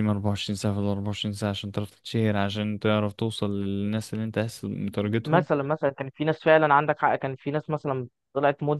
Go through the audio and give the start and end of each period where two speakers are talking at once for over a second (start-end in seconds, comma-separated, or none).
none